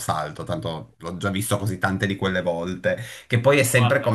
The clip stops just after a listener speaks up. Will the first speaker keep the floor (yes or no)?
yes